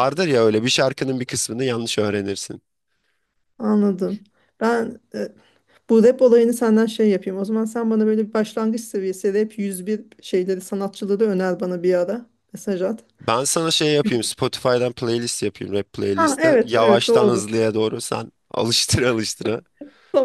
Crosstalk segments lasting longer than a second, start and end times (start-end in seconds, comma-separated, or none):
16.1-17.4